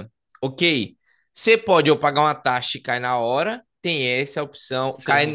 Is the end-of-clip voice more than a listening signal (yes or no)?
no